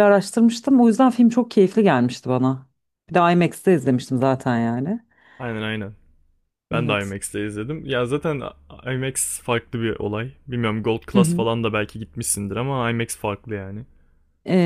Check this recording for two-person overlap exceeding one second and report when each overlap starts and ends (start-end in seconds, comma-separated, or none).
none